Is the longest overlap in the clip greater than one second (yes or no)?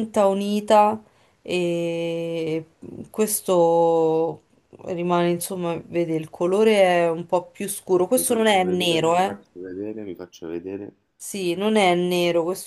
yes